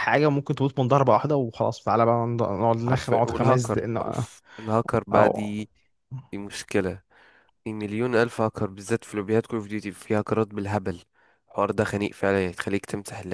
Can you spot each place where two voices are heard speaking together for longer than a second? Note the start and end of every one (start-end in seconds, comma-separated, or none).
2.9-4.2